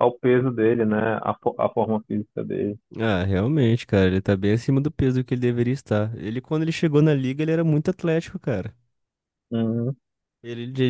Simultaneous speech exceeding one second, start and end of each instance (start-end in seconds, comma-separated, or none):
none